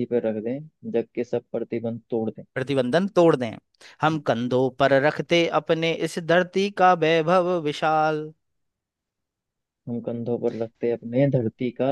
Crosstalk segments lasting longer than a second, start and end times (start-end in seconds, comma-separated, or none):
none